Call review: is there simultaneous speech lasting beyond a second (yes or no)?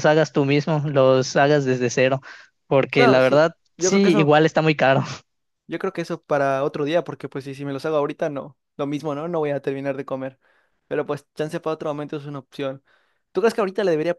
yes